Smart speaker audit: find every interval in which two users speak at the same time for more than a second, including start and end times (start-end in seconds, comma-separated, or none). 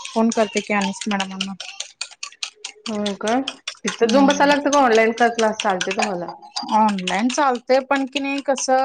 none